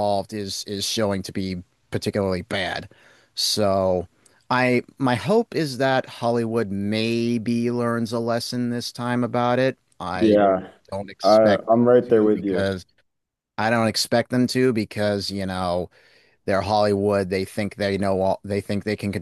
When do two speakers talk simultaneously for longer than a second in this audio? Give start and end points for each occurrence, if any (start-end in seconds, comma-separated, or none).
11.2-12.7